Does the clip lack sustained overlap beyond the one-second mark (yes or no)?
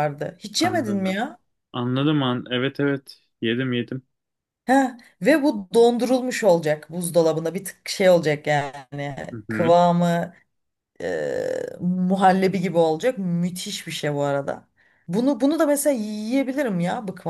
yes